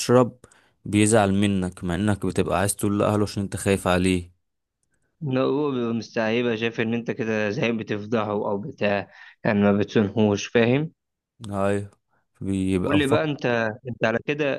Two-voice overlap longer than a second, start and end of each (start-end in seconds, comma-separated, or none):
none